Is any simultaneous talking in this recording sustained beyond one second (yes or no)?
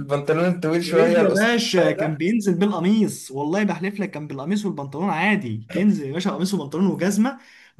yes